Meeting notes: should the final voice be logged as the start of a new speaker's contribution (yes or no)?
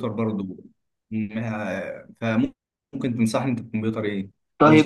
yes